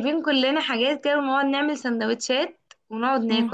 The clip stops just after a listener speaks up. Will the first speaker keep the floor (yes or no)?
yes